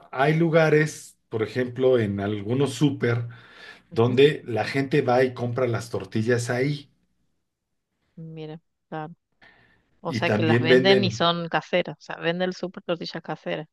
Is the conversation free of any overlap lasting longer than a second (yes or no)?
no